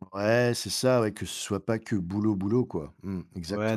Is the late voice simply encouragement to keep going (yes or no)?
no